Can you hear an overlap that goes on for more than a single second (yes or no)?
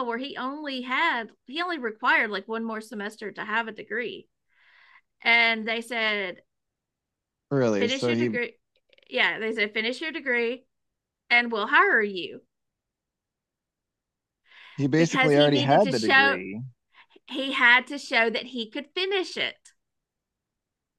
yes